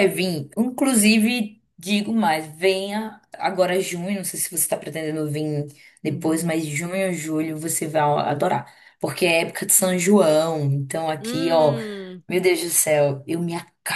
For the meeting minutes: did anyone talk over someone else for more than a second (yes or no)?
no